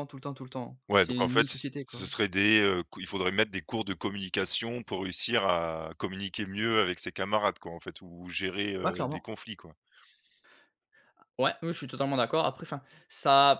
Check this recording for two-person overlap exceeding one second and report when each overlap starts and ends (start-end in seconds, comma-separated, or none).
0.9-2.1